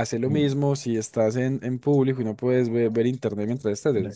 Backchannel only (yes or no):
no